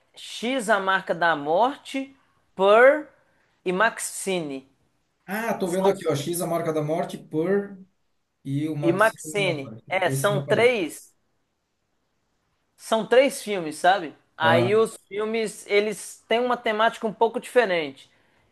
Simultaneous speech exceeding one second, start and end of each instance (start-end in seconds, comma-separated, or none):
8.8-10.8